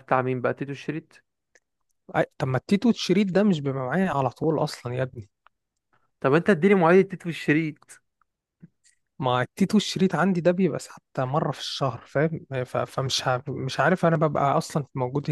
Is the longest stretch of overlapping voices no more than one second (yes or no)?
yes